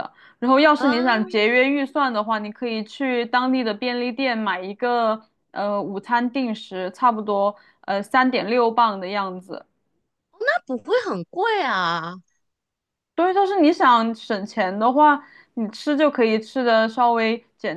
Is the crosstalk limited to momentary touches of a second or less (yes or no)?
yes